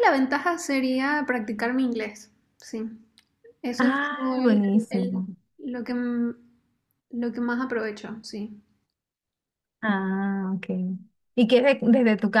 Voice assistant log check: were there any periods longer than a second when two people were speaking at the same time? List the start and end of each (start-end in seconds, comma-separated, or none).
3.8-5.3